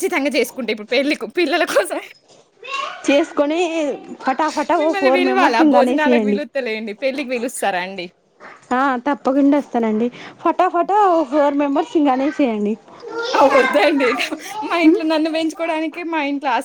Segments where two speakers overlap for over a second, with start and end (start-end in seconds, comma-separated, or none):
4.8-6.4